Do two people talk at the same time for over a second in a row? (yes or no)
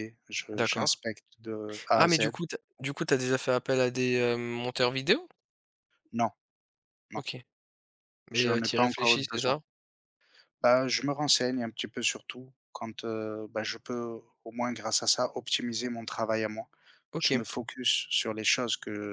yes